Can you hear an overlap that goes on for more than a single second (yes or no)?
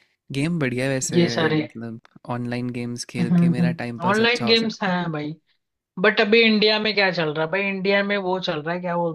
yes